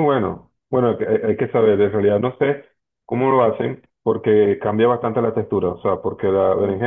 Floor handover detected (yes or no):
no